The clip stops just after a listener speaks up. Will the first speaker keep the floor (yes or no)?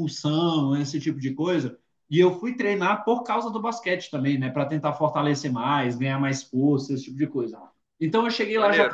yes